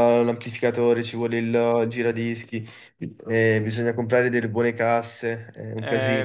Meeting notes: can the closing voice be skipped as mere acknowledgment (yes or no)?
no